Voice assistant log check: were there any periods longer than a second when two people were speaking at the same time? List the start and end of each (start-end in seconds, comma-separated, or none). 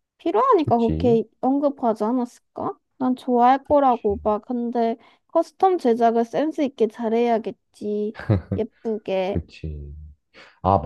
none